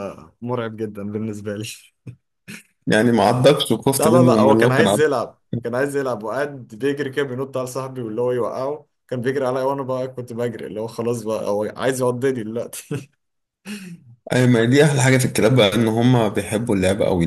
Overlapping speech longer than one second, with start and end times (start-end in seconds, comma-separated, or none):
3.9-5.2